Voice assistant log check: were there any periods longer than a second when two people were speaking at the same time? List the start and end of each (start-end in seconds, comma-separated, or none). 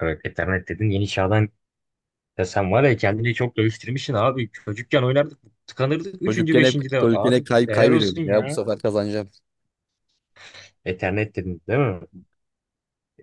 6.3-8.6